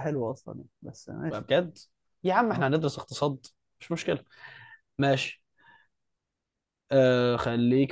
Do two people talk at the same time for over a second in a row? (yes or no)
no